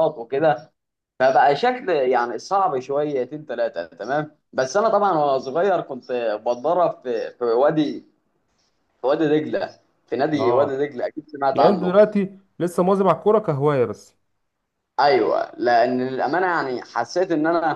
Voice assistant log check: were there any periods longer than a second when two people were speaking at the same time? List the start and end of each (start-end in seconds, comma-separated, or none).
none